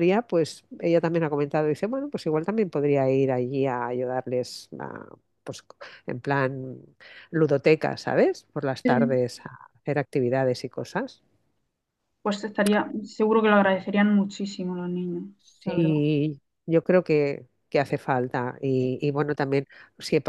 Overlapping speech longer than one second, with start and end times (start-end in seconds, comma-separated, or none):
none